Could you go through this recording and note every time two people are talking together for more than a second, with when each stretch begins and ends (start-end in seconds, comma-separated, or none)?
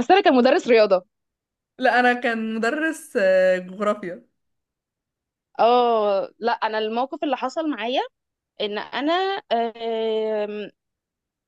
none